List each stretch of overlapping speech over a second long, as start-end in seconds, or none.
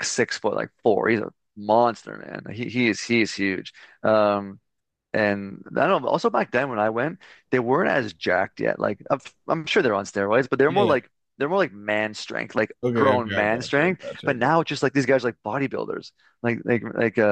12.8-14.7